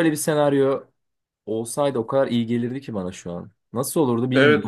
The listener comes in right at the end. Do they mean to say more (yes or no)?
yes